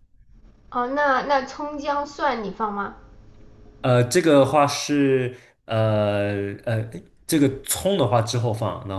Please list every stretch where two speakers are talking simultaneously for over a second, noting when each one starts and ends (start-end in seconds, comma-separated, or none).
none